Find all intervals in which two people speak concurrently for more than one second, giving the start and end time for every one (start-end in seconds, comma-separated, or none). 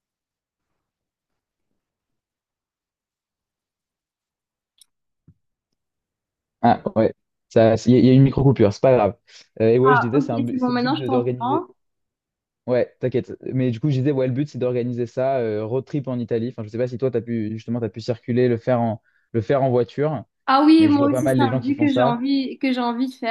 9.8-11.6, 20.8-22.2